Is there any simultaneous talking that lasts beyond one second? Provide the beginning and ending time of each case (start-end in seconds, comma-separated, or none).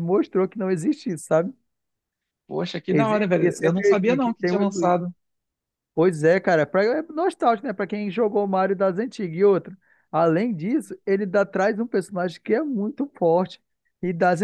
2.9-5.0